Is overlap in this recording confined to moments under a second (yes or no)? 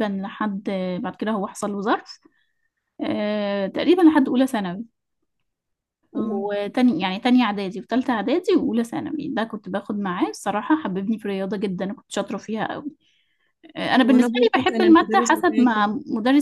no